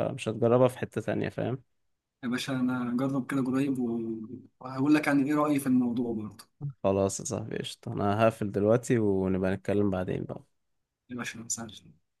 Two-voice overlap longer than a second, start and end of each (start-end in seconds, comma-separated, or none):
none